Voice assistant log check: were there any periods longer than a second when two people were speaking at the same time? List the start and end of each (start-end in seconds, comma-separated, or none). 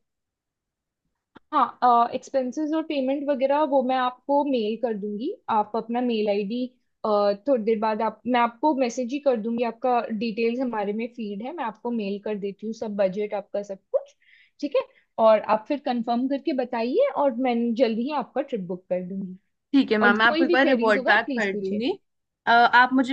20.0-21.8